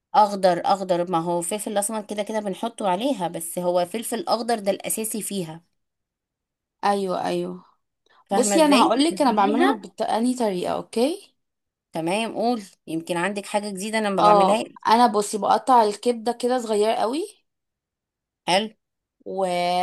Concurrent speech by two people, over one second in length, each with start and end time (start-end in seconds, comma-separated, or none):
8.3-9.8